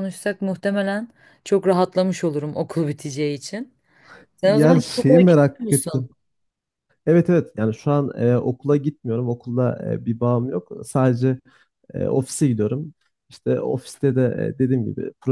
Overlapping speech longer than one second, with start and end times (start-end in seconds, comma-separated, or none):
4.5-6.1